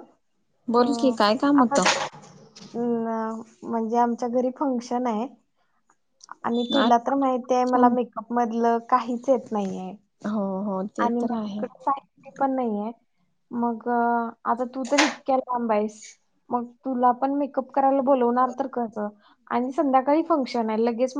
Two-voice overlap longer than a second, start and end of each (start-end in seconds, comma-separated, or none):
none